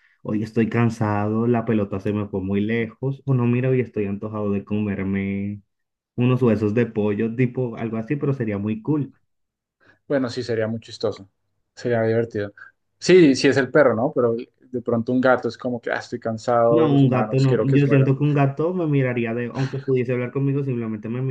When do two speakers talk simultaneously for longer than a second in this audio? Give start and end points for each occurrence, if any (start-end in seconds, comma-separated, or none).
16.7-18.1